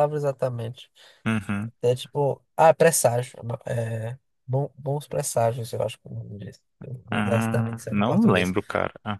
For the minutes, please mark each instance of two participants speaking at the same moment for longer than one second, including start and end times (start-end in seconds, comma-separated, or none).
7.1-8.5